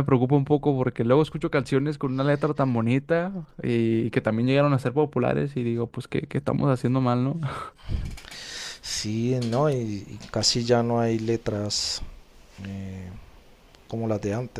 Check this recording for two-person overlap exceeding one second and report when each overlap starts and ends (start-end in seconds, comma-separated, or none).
none